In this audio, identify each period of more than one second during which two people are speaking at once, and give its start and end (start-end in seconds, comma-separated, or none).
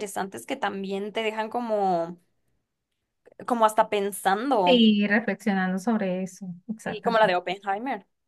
none